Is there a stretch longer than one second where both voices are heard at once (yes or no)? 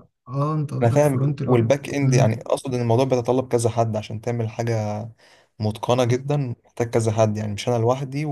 yes